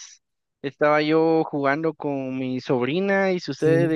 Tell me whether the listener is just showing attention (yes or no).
yes